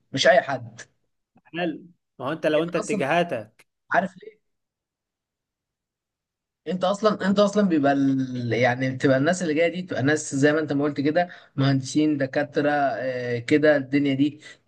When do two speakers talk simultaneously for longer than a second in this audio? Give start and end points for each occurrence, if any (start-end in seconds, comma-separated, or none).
none